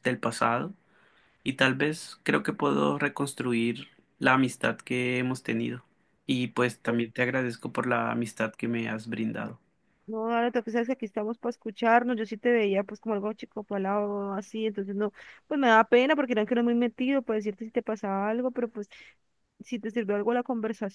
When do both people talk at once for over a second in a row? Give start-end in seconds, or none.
none